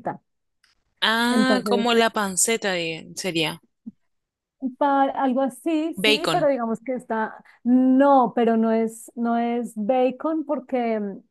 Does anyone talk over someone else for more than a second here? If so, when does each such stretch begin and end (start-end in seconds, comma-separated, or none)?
none